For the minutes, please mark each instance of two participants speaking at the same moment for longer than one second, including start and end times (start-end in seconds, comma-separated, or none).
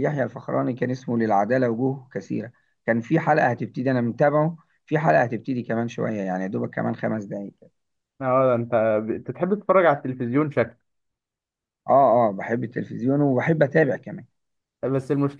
none